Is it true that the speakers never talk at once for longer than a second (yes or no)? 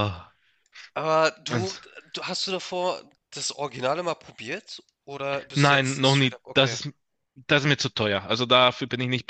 no